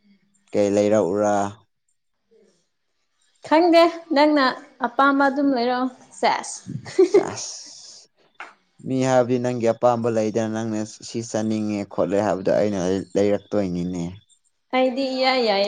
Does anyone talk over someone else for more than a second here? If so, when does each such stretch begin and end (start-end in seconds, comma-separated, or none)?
none